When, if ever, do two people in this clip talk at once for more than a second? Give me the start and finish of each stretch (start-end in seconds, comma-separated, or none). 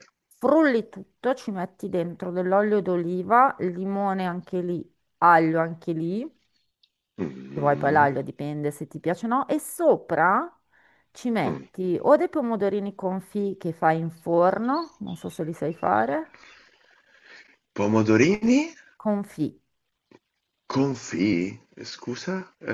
none